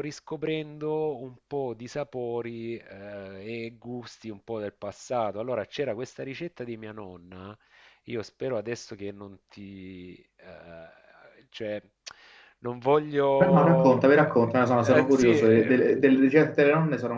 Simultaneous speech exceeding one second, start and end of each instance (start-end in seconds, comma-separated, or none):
13.4-16.0